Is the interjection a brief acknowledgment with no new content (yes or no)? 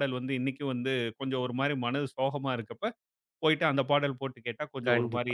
no